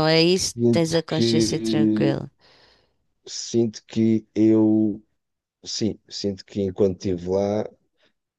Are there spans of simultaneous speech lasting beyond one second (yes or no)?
yes